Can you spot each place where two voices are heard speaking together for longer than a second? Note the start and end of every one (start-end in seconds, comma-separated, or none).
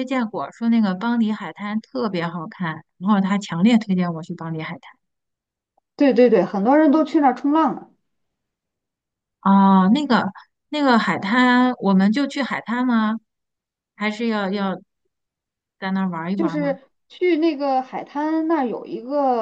none